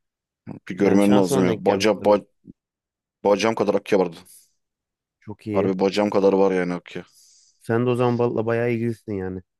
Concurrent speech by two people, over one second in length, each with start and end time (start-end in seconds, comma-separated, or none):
0.8-2.2